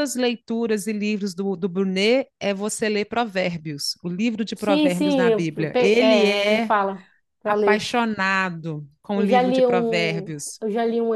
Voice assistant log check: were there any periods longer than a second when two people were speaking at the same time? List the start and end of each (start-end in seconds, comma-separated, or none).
4.6-6.7, 9.1-10.6